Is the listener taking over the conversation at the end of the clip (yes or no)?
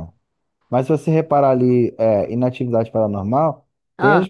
no